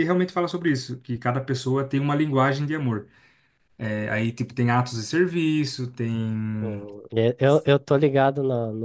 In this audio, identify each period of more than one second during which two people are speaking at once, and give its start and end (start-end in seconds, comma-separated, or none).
none